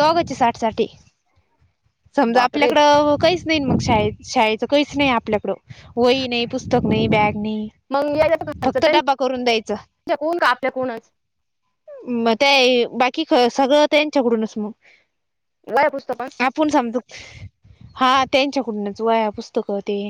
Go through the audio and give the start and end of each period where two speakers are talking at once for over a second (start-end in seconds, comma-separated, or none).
none